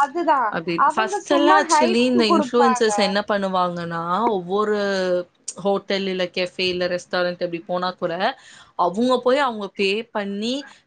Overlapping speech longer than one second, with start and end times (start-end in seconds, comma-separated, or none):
0.9-2.8